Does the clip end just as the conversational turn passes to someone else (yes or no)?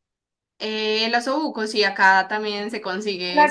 yes